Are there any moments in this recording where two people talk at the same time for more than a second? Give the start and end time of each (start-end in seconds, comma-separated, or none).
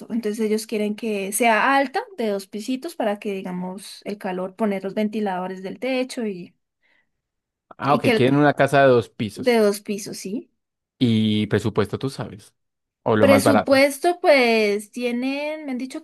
none